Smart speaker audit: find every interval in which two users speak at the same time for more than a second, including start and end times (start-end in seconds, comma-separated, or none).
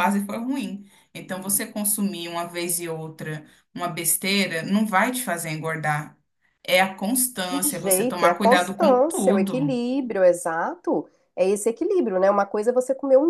7.6-9.8